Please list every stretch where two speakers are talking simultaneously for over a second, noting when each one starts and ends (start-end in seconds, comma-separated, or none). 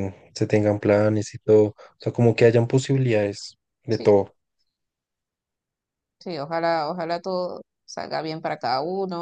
none